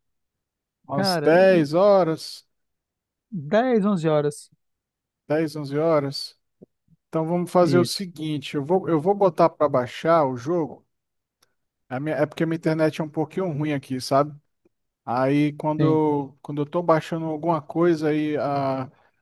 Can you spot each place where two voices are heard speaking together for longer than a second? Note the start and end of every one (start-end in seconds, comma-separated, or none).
none